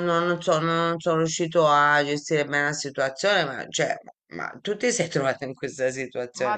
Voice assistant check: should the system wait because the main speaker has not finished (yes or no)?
no